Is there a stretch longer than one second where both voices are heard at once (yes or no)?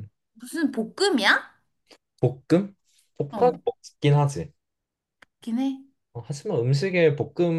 no